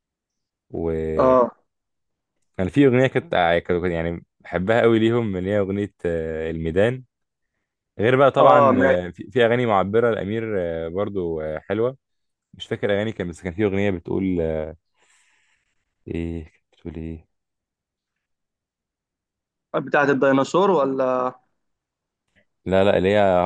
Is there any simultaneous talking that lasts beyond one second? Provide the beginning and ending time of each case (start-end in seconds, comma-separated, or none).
none